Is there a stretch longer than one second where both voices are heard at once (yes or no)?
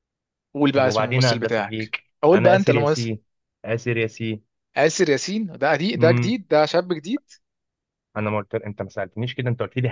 yes